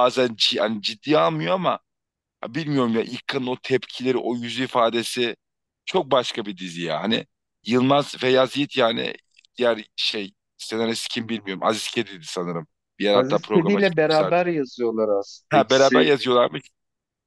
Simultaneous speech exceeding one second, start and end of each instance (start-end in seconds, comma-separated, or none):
13.1-14.4